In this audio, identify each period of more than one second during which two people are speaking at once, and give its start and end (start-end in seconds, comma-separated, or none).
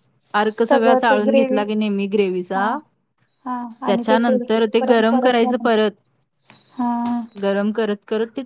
3.9-5.8